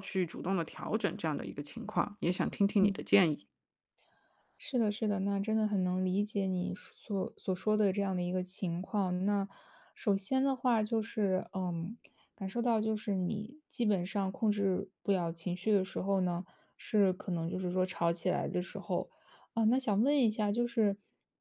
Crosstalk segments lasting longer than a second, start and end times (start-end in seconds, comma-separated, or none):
none